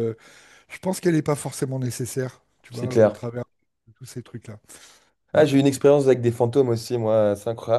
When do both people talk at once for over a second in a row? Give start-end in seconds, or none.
none